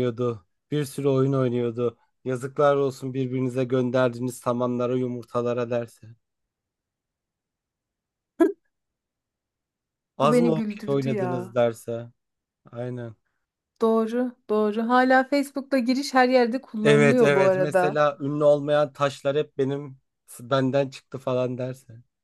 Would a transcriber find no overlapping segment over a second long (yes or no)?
no